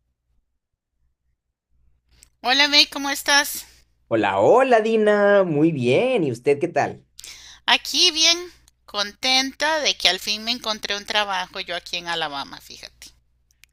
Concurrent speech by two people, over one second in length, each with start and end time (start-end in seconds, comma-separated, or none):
none